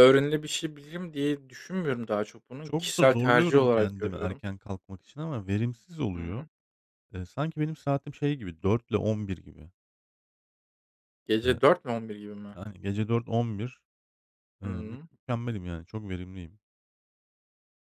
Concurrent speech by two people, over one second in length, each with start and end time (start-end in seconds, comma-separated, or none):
2.6-4.4